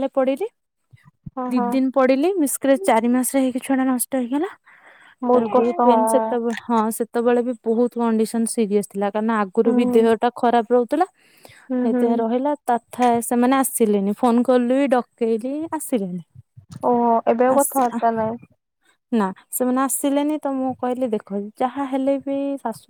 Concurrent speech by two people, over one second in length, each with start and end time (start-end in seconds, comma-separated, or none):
none